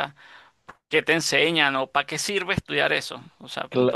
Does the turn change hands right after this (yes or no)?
yes